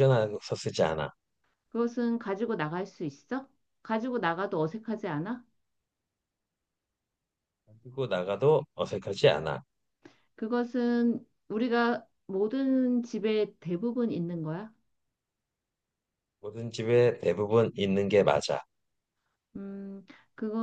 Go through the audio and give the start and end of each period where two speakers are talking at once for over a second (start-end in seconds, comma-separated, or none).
none